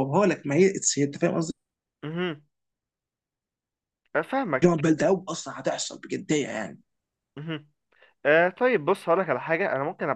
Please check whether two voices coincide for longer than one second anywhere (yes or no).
no